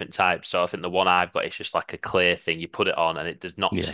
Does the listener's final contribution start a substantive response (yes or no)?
no